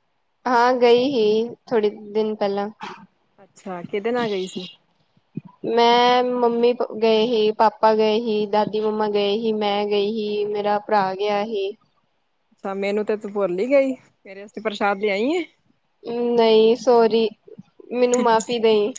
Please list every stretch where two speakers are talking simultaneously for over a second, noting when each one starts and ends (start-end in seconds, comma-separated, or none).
none